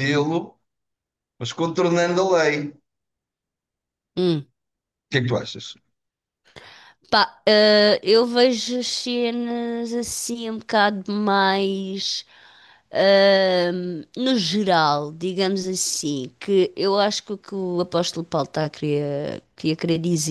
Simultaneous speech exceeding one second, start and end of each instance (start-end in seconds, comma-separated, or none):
none